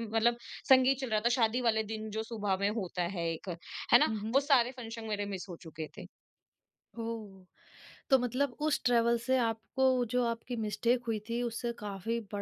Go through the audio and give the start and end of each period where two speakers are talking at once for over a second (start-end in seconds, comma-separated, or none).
none